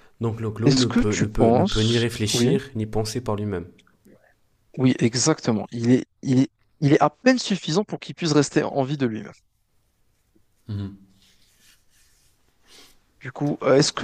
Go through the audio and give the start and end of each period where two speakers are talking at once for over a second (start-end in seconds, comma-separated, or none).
0.7-2.5